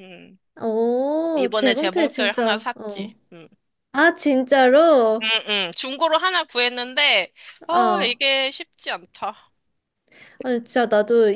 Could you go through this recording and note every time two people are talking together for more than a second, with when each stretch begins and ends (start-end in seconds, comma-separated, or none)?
1.3-3.1